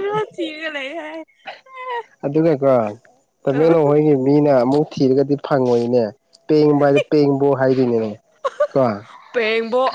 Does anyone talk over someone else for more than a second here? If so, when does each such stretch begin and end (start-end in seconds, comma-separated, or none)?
none